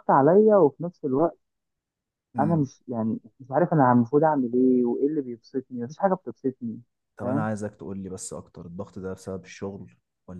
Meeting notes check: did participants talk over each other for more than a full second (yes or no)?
no